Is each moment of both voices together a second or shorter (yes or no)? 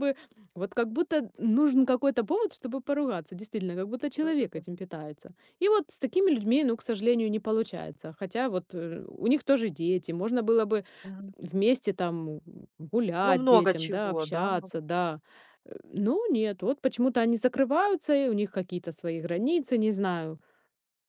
no